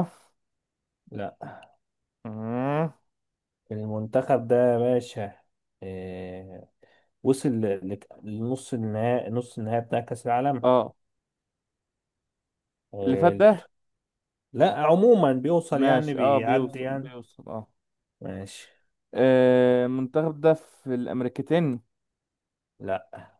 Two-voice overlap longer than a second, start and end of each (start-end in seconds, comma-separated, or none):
15.8-17.1